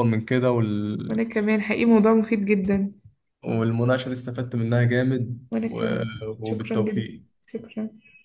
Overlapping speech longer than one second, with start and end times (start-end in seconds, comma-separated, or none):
5.5-7.3